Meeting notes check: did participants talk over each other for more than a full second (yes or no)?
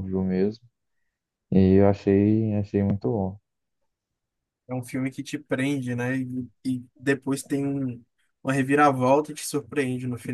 no